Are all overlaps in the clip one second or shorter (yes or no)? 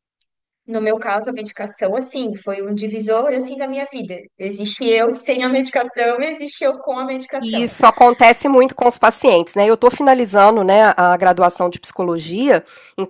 yes